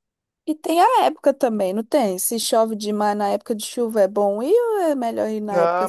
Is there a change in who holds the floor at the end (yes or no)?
yes